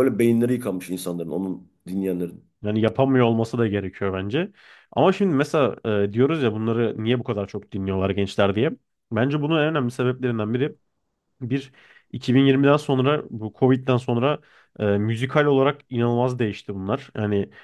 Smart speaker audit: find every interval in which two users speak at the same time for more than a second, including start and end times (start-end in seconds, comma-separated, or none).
none